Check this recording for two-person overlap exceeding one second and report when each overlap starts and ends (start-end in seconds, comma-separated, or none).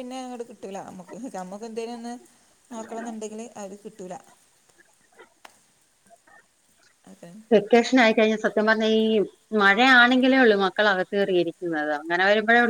none